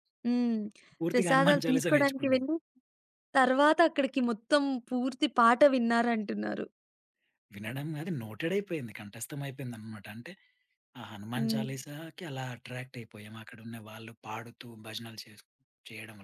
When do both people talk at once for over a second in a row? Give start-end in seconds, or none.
1.1-2.4